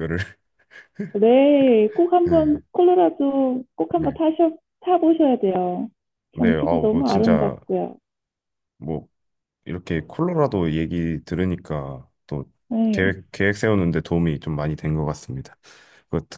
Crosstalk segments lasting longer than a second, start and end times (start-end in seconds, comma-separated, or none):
6.4-7.6